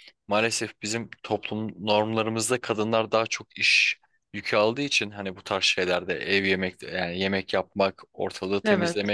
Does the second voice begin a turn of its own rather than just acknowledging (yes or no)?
no